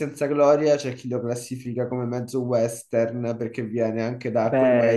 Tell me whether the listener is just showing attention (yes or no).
no